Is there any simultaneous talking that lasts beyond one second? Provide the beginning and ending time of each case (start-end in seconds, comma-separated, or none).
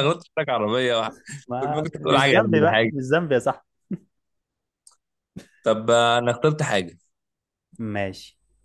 1.6-2.9